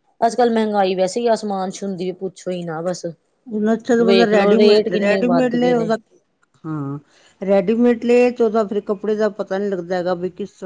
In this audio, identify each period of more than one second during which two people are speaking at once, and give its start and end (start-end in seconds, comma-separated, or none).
4.3-5.9